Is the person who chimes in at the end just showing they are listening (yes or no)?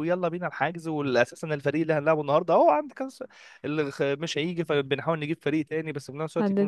yes